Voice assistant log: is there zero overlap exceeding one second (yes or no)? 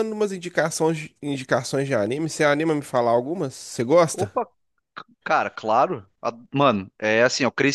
yes